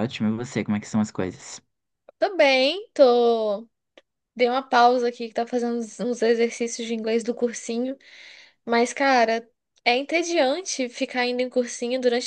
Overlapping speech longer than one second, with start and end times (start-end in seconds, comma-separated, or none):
none